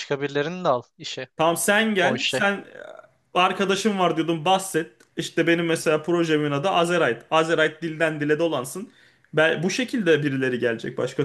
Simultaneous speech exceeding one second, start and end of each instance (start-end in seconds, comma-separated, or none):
none